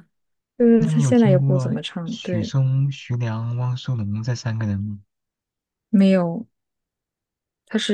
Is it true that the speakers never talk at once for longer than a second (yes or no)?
no